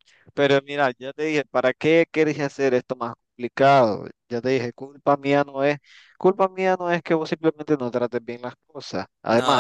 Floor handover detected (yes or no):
yes